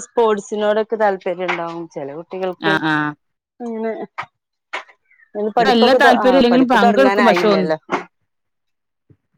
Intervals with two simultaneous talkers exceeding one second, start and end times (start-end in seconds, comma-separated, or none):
5.6-7.7